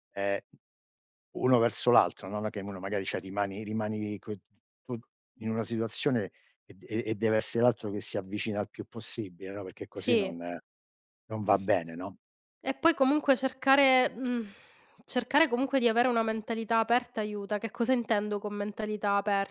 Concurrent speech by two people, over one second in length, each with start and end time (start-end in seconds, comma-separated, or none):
none